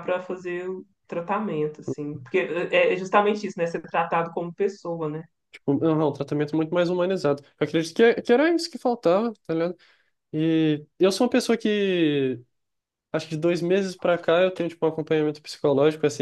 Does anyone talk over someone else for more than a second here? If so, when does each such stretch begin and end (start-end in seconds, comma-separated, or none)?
none